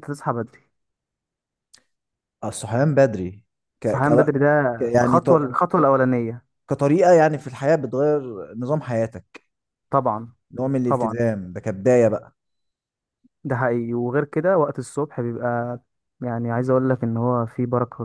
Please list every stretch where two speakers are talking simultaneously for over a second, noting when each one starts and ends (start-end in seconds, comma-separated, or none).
none